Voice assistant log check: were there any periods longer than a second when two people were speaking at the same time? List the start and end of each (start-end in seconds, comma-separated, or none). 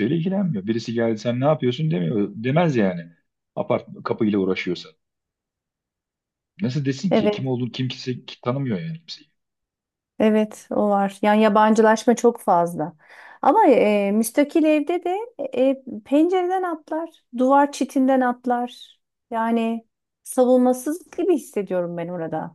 none